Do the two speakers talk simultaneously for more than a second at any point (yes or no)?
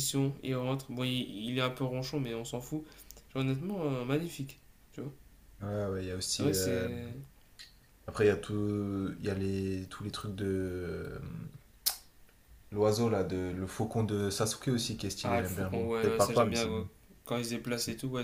yes